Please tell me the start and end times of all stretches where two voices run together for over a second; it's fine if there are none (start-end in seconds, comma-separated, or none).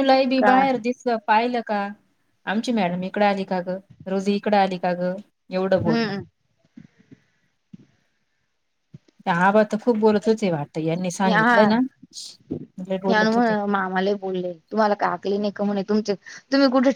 none